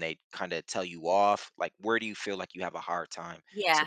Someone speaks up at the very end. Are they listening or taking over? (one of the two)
taking over